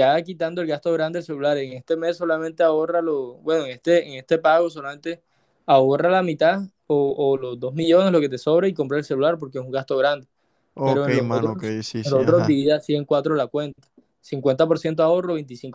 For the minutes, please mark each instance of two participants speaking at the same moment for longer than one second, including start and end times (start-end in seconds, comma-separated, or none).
10.8-12.6